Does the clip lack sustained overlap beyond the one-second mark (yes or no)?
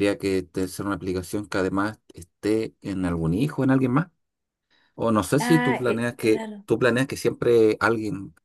no